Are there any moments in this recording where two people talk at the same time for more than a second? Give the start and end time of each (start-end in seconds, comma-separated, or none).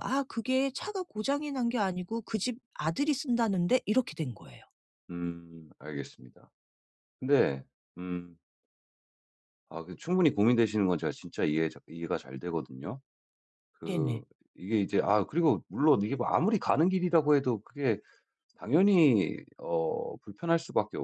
none